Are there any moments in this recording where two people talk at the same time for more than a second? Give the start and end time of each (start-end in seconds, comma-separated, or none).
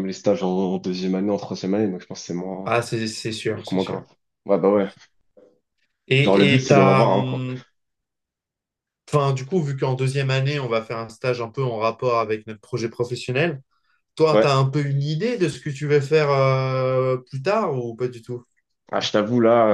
6.2-7.4